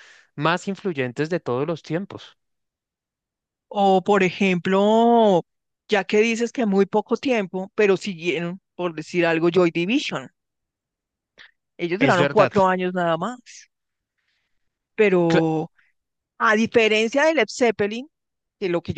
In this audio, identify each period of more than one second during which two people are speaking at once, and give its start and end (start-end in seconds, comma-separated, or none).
none